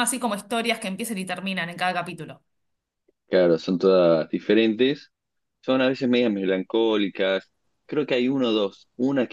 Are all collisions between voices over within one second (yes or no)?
yes